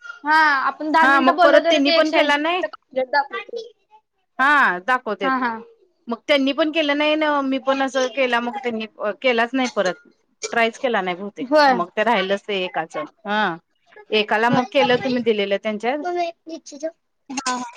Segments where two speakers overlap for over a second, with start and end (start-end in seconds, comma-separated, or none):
1.0-2.6